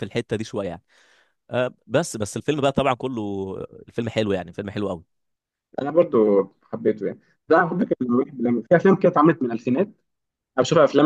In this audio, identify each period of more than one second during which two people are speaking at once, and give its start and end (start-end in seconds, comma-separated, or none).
none